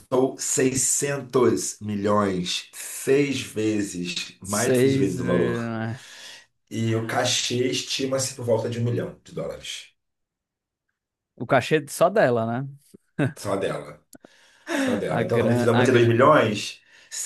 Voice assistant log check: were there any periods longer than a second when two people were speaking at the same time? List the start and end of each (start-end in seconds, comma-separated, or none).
4.4-5.7, 15.1-16.3